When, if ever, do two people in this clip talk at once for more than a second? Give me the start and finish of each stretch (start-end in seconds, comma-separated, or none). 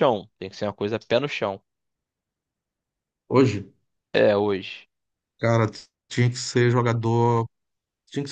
none